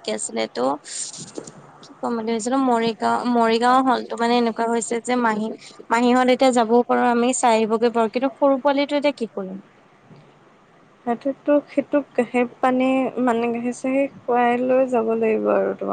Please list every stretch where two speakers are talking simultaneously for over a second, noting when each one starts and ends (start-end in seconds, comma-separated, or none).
none